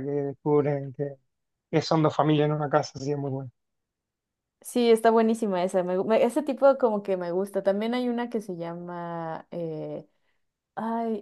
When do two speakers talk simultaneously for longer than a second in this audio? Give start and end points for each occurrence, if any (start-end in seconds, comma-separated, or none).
none